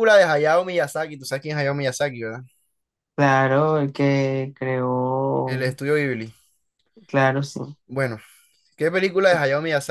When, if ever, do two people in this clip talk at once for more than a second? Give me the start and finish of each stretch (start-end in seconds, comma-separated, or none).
none